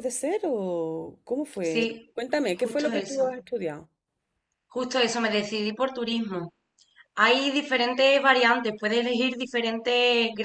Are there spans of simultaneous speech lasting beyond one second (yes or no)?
yes